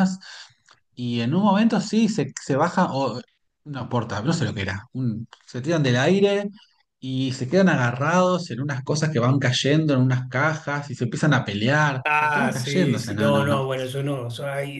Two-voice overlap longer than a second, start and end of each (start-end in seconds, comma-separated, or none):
12.1-13.6